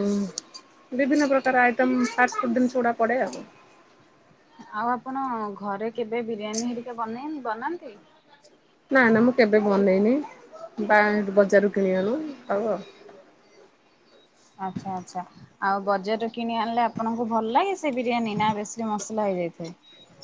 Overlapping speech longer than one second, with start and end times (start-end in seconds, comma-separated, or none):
none